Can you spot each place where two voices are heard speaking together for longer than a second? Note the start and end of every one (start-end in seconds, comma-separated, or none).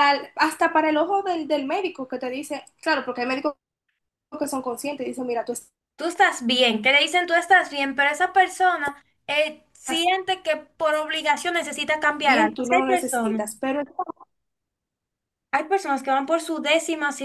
12.2-13.4